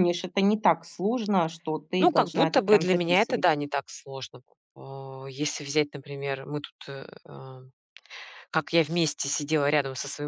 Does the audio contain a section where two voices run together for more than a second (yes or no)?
yes